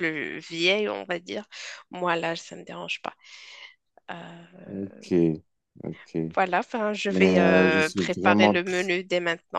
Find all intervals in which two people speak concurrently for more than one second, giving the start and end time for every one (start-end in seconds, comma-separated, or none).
7.1-8.8